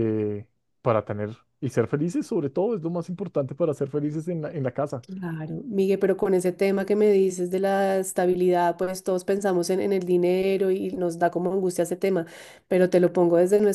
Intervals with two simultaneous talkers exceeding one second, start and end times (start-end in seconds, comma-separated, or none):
none